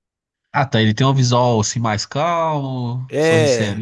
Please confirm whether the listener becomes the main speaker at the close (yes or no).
yes